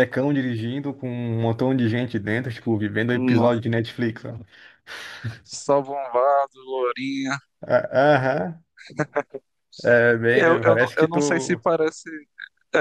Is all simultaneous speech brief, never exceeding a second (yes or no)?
no